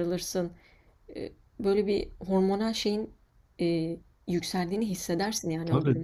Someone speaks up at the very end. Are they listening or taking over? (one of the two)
taking over